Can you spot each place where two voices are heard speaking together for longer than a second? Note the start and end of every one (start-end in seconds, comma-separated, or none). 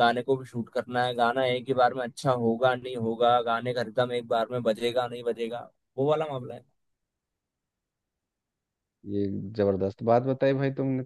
none